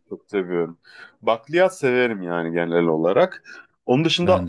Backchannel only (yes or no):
yes